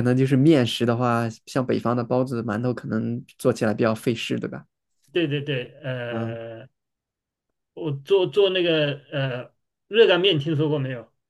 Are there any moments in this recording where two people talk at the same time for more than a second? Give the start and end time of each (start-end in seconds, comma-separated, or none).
none